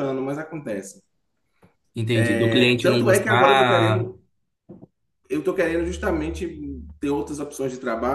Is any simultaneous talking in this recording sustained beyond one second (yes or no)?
yes